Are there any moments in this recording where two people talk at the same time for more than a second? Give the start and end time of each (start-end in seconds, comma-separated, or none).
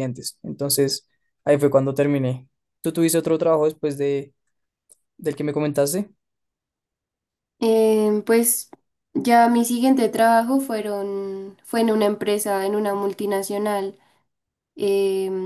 none